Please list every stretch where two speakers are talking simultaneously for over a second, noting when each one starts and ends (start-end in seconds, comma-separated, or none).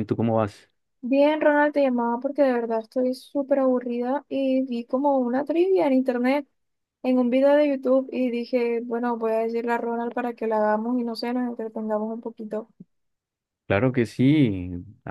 none